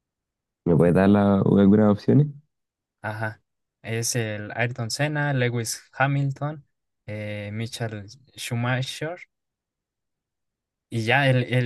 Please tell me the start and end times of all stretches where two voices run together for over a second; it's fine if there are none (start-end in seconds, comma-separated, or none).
none